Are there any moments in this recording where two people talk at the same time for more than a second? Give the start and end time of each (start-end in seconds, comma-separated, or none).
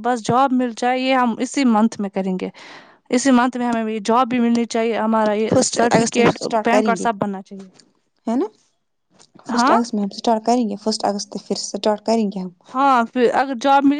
5.5-7.0